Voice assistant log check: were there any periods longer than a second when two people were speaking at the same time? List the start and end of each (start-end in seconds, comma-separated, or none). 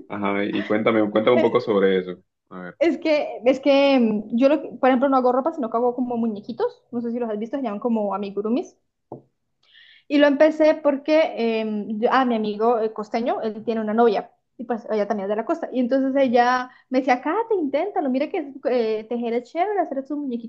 none